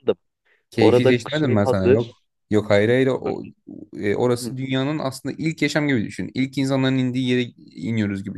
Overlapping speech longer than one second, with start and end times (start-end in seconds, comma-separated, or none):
0.8-2.2